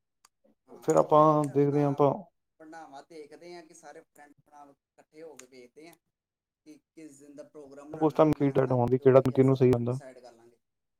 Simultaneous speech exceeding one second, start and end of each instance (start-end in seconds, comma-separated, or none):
8.1-10.0